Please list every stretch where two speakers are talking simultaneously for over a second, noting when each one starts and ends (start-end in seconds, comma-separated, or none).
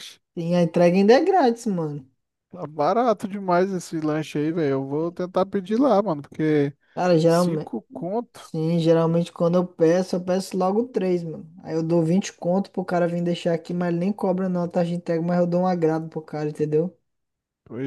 none